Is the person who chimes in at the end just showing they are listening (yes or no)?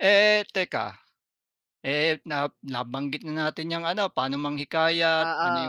yes